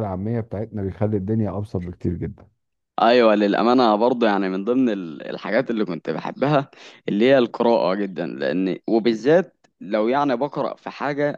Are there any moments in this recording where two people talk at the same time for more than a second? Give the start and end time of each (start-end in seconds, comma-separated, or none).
none